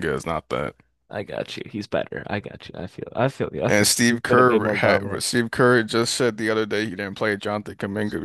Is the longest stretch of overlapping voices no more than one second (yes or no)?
no